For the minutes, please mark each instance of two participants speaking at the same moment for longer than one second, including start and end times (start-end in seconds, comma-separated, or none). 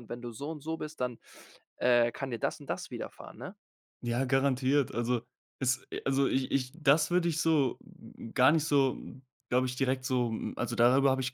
none